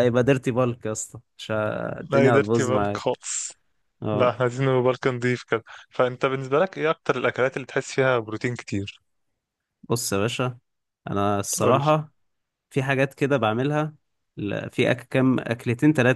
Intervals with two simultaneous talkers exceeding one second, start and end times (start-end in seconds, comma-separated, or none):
2.0-3.2